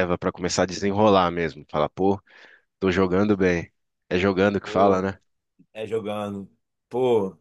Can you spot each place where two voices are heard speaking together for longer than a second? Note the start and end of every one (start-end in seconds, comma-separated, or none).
none